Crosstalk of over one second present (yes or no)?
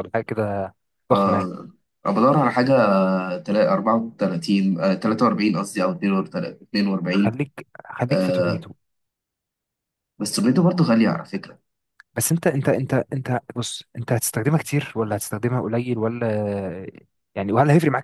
no